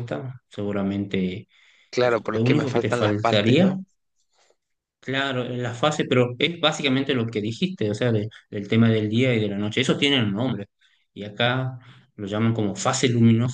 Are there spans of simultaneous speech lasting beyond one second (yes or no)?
yes